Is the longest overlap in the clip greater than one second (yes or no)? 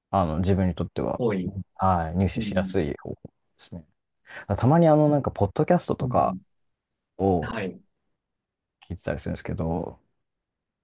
no